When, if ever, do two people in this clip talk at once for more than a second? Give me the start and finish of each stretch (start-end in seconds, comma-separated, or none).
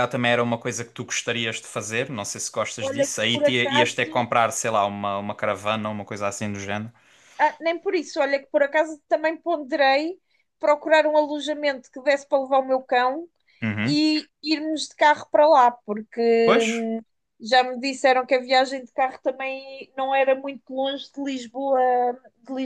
2.8-4.3